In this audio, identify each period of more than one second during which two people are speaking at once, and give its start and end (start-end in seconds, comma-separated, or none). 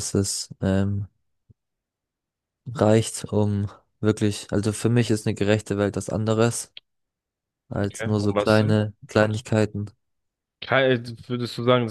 7.8-9.4